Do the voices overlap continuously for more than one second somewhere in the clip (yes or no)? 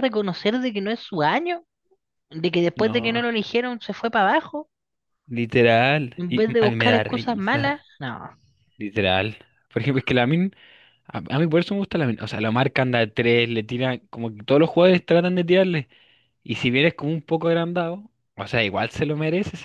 yes